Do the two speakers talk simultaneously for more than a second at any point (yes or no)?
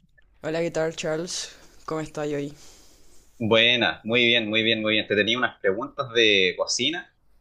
no